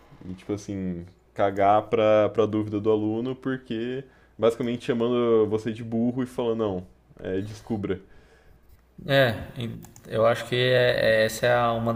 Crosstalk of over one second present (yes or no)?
no